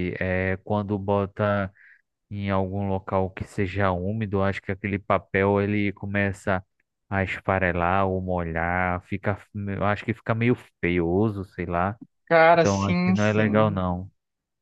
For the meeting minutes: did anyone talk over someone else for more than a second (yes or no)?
yes